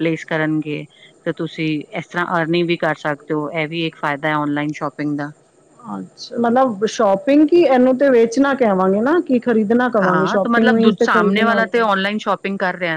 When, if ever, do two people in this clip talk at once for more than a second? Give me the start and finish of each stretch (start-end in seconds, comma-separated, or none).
10.0-11.9